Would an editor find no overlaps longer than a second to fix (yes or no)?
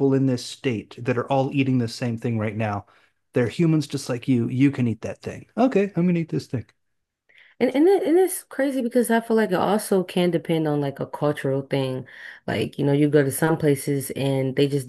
yes